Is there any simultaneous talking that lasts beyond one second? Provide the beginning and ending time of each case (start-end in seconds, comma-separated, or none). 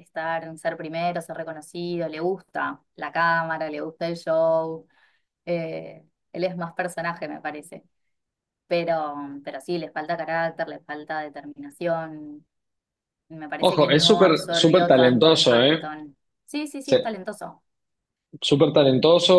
13.6-15.9